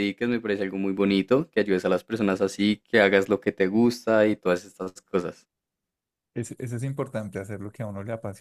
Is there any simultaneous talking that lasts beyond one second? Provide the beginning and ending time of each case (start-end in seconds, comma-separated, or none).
none